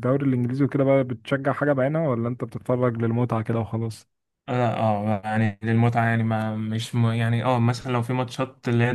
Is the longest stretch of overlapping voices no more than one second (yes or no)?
yes